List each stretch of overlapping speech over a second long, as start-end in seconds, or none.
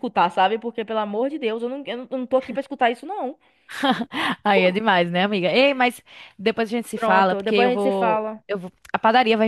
6.9-8.4